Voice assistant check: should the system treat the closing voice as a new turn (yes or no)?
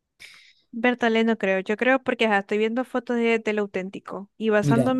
no